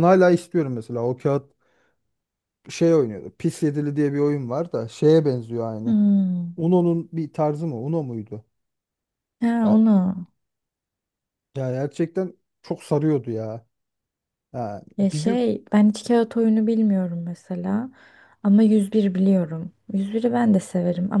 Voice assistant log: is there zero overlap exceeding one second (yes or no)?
yes